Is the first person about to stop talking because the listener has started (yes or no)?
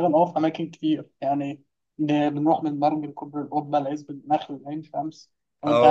yes